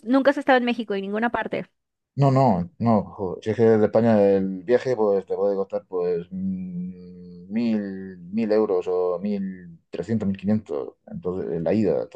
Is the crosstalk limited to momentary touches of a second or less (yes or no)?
yes